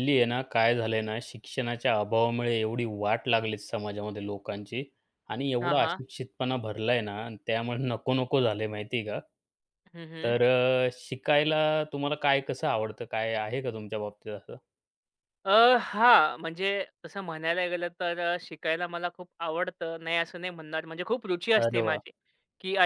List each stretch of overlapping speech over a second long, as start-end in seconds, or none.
none